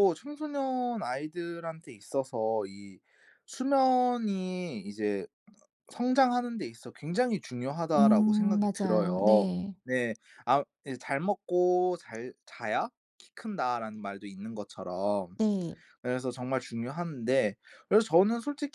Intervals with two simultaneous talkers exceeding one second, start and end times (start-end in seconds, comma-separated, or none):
8.0-9.7